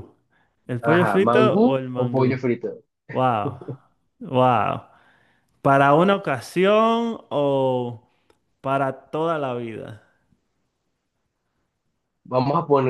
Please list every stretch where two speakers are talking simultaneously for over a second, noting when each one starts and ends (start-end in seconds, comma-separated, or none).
0.8-2.4